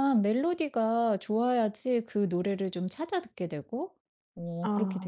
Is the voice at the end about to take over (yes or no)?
yes